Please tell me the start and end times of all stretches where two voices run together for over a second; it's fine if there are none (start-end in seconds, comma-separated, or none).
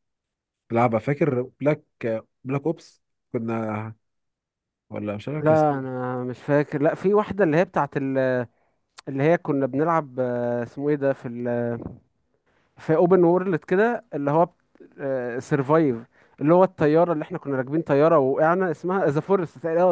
none